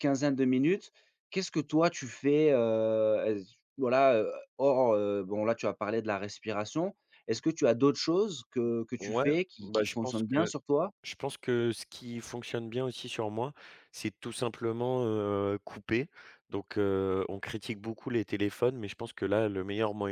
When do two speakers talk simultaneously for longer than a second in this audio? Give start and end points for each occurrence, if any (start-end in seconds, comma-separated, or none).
9.0-10.5